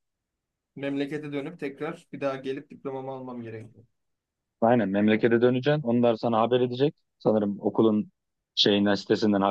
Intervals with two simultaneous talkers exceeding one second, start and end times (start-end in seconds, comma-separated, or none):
none